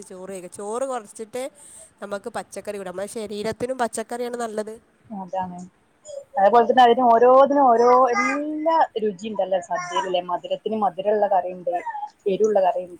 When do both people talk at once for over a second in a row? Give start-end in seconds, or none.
none